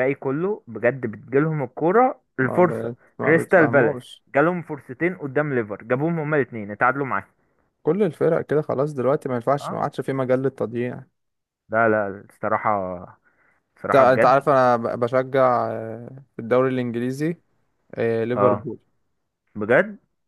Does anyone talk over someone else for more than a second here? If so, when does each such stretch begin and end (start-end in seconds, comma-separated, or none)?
2.4-4.0